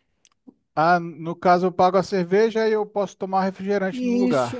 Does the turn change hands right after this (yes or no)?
yes